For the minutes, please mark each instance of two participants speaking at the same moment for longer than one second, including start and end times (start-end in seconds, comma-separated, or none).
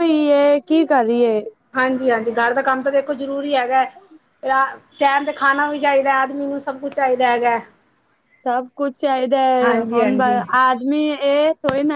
none